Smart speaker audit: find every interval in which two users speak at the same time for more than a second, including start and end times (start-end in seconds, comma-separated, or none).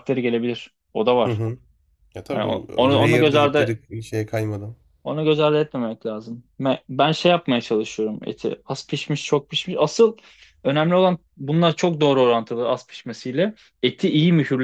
2.3-3.8